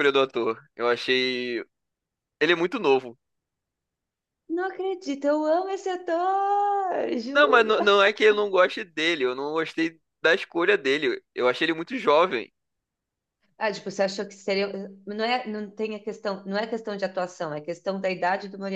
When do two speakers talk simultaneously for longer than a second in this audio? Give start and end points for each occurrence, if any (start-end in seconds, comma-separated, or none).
none